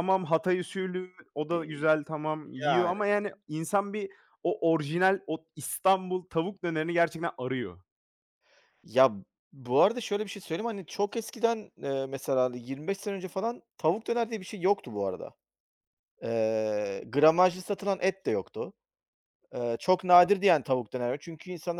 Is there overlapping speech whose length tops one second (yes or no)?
no